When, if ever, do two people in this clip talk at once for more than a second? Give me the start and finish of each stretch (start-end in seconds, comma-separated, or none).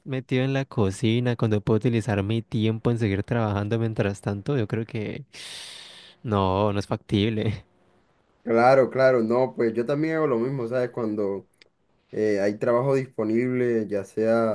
none